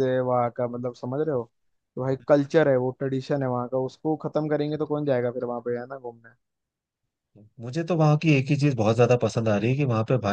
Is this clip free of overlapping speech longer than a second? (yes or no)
yes